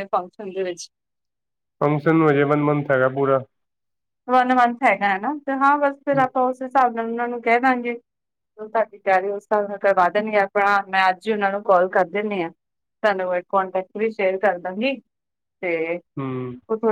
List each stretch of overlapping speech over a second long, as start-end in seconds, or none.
none